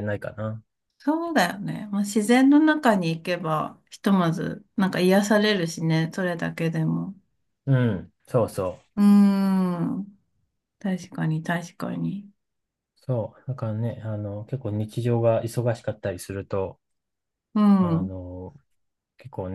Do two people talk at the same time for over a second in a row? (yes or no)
no